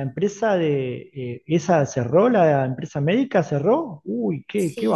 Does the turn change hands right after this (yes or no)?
yes